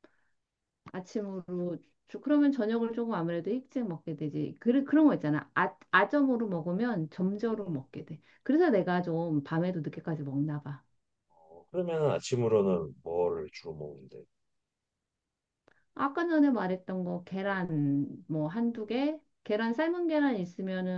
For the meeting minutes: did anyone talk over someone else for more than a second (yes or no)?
no